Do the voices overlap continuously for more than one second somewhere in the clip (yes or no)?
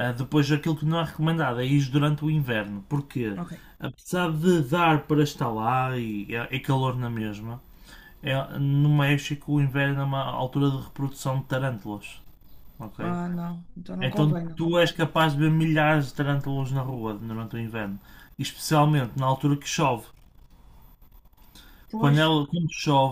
no